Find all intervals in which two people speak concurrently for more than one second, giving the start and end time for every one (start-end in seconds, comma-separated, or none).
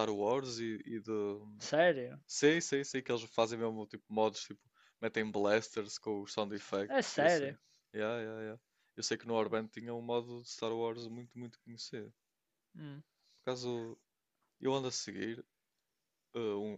none